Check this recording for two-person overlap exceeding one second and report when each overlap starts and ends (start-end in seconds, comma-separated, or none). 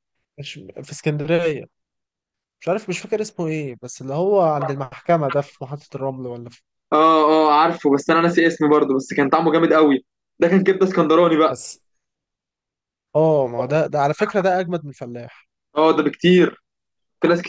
none